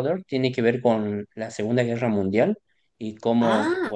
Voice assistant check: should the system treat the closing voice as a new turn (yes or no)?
no